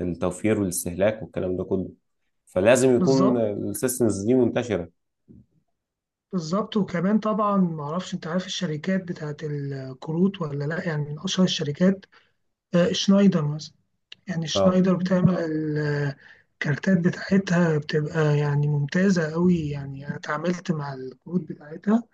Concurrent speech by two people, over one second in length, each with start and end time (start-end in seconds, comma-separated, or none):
none